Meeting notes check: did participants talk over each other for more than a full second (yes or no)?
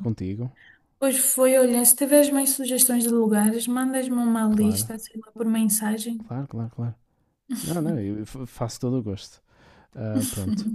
no